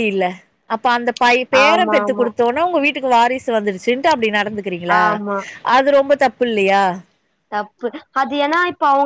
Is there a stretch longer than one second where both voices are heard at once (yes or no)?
no